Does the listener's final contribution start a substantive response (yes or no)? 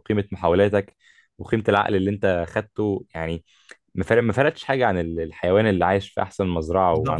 yes